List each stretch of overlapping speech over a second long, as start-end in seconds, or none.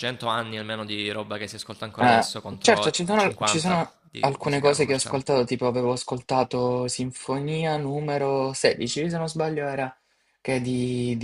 2.0-5.4